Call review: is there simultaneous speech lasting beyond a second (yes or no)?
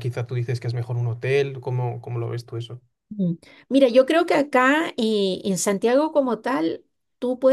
no